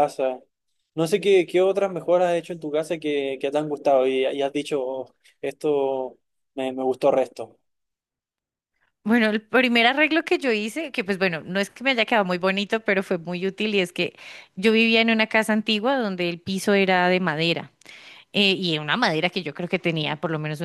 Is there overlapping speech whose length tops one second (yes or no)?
no